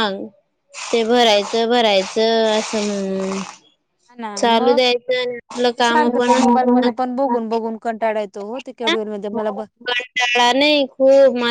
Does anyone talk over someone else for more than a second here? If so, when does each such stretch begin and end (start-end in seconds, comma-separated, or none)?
none